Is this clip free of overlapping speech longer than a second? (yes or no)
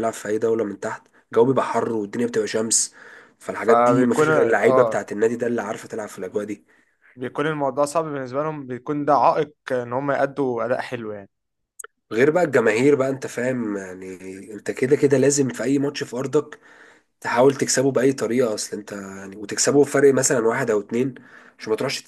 no